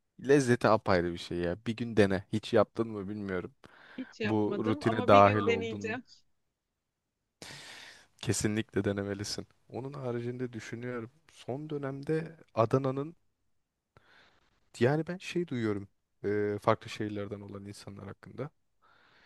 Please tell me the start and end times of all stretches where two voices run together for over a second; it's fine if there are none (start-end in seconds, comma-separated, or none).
4.2-6.0